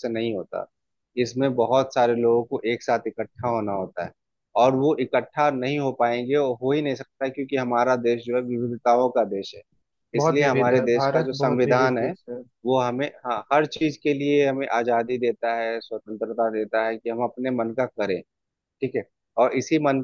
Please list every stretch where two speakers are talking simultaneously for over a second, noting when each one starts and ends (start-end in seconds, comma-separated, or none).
10.2-12.1